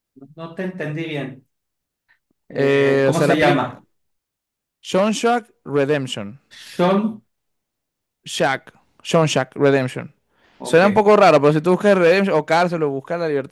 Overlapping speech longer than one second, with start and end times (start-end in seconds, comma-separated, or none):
2.5-3.8